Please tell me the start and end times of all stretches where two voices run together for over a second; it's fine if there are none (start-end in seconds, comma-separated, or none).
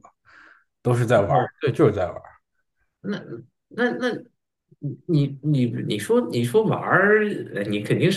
none